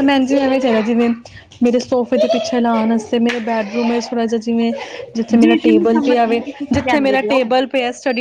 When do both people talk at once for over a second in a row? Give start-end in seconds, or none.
5.4-7.4